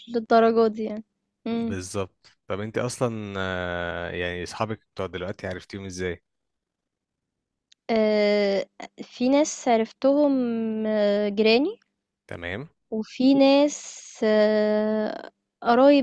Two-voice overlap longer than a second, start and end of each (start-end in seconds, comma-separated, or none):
none